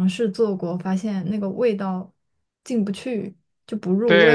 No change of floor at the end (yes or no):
no